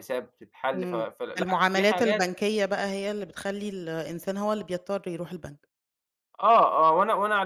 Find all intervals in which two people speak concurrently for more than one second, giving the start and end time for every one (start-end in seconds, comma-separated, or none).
0.8-2.3